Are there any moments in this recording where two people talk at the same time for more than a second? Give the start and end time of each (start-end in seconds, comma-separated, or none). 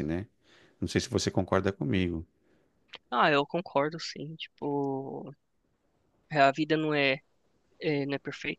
none